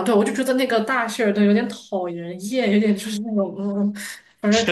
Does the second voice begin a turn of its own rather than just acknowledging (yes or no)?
yes